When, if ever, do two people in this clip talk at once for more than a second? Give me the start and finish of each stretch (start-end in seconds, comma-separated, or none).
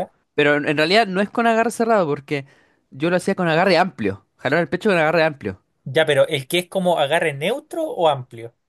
none